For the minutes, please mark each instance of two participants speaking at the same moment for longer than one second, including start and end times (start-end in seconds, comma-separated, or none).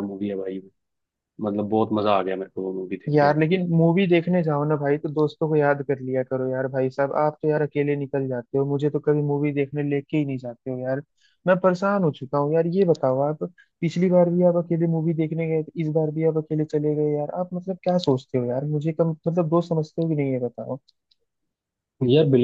none